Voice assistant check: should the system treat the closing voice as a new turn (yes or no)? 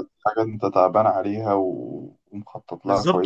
yes